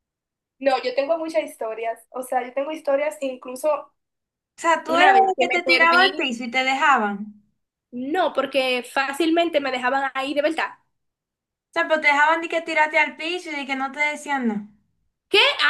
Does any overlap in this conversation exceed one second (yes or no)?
yes